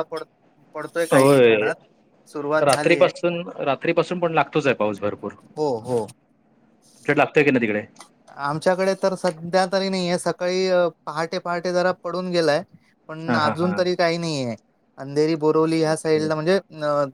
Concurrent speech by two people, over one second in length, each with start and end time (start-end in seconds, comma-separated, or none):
none